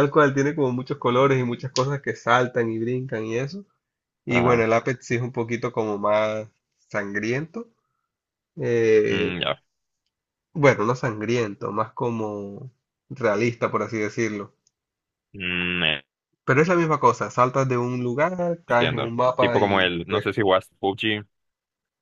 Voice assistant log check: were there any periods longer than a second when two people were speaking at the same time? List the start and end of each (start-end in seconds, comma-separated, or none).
18.7-20.3